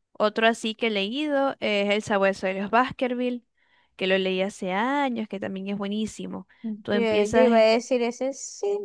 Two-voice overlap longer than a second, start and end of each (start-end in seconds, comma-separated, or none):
none